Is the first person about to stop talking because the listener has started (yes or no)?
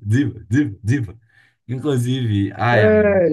no